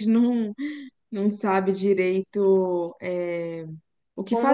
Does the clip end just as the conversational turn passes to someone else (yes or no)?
yes